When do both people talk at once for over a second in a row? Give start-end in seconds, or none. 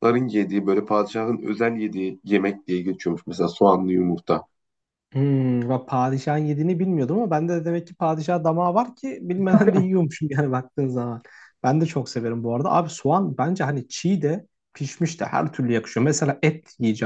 none